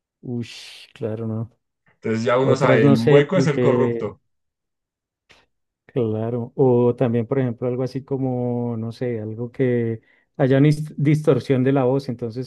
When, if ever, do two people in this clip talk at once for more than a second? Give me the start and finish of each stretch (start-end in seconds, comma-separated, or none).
2.4-4.0